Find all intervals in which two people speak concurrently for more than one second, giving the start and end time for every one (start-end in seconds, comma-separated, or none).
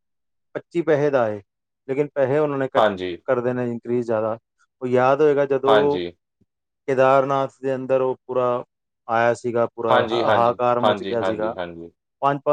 9.9-11.5